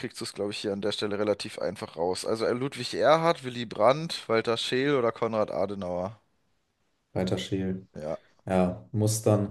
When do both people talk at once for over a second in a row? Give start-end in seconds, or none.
none